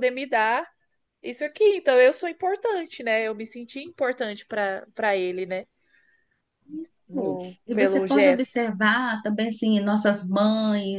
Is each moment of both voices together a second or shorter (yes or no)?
no